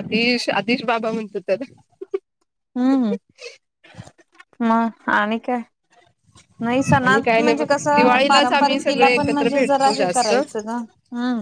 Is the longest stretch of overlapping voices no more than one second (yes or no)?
no